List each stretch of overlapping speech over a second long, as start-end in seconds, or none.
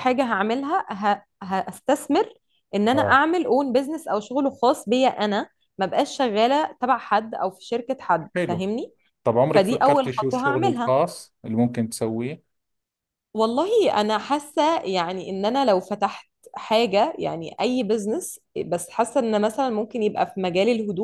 9.5-10.9